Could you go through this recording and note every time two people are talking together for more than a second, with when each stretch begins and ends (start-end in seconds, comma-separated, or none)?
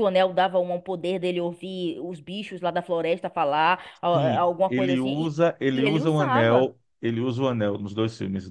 4.1-6.7